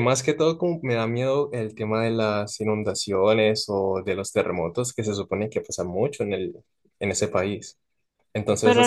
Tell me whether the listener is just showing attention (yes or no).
no